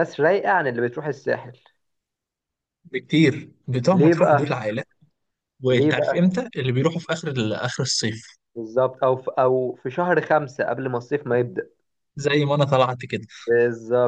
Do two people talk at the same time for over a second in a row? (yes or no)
no